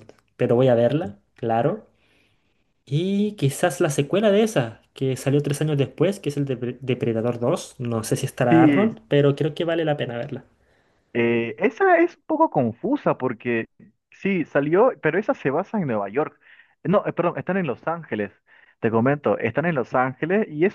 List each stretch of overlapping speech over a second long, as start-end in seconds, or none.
none